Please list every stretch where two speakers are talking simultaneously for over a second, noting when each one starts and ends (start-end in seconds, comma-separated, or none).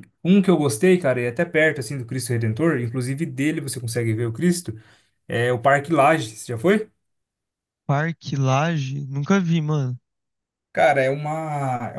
none